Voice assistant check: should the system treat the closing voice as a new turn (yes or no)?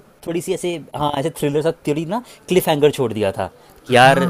no